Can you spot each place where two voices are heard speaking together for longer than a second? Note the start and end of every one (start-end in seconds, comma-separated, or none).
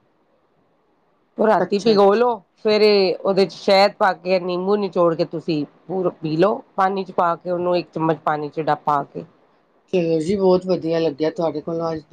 none